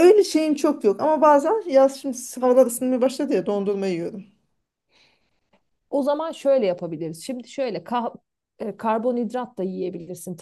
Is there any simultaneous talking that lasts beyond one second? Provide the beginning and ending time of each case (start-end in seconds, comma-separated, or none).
none